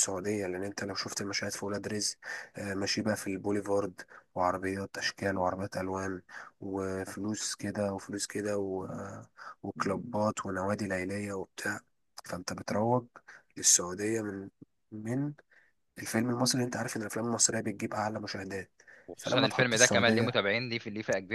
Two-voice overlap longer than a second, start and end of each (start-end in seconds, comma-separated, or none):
19.2-20.4